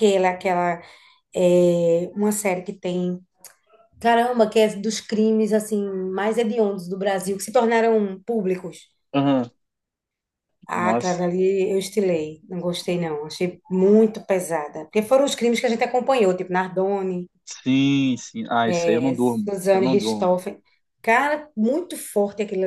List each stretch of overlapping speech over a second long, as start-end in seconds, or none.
18.7-20.4